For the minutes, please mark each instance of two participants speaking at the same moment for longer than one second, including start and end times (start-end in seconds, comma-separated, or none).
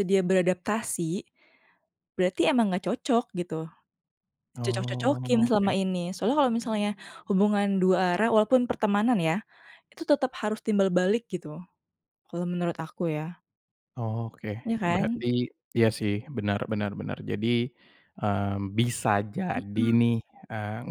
4.6-5.8